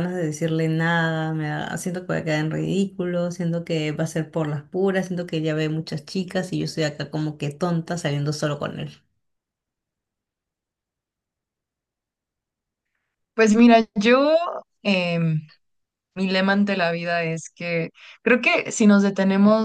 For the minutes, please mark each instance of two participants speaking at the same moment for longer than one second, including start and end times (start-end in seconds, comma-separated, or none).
none